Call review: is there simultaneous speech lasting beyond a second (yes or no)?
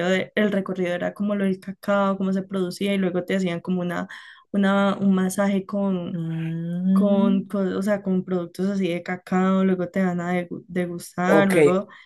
no